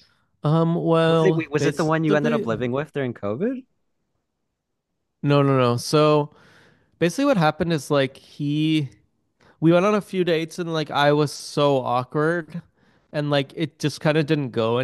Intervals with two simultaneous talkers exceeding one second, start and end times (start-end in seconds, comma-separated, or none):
1.1-2.5